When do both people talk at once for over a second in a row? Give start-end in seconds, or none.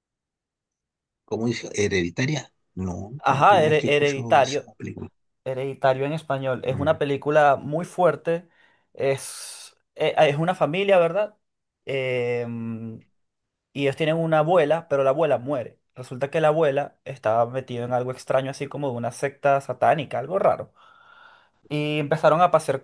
3.2-4.7